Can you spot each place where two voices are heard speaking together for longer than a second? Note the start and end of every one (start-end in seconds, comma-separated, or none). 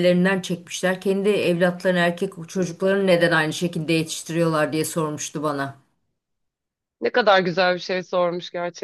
none